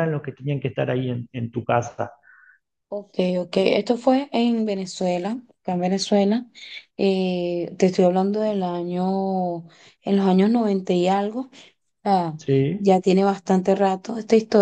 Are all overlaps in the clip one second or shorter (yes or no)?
yes